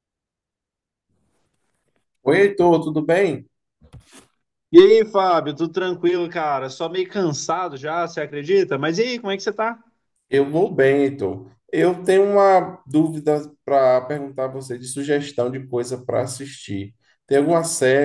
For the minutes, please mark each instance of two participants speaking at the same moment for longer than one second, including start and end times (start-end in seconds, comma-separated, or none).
none